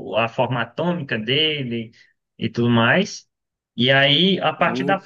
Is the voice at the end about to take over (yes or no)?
no